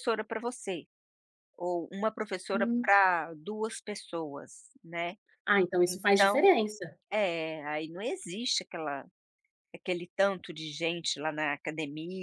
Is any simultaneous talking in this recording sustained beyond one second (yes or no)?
no